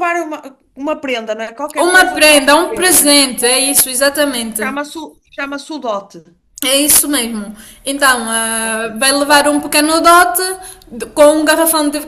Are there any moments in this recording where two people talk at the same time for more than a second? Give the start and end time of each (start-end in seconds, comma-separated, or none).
1.8-3.3